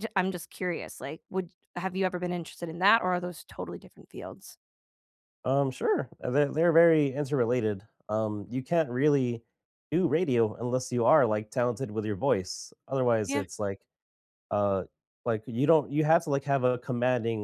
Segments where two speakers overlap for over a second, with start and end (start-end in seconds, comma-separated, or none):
none